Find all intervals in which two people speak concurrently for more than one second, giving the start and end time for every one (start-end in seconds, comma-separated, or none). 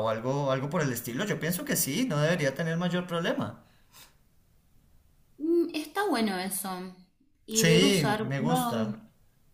7.5-8.9